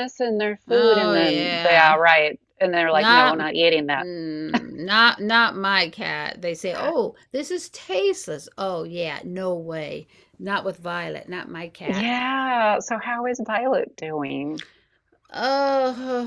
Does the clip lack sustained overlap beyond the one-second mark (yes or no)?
no